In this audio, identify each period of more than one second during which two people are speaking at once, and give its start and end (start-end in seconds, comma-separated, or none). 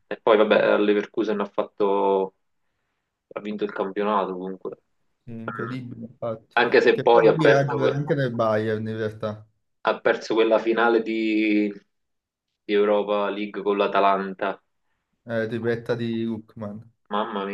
6.5-8.0